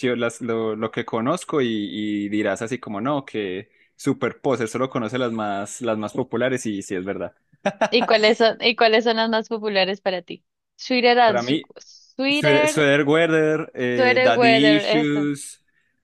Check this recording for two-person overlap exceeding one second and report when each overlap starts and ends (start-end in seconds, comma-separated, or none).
13.9-15.3